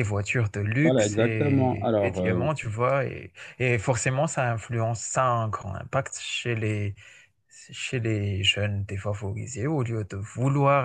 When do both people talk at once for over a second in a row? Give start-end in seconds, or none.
0.8-2.5